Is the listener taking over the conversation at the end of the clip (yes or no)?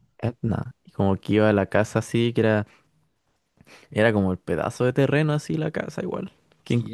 yes